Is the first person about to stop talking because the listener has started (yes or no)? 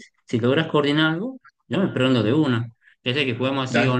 no